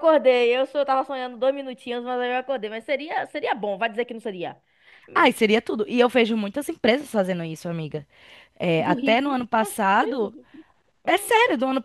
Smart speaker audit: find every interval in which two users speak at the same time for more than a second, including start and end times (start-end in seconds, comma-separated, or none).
8.8-10.3